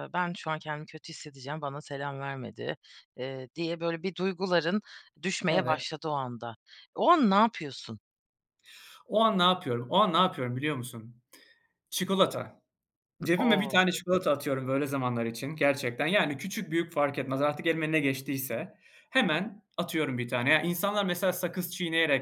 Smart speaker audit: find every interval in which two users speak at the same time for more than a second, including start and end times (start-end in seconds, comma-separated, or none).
none